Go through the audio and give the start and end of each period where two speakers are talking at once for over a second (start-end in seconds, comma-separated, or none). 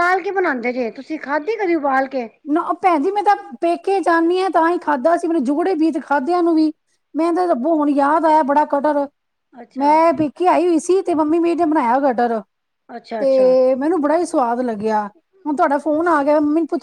none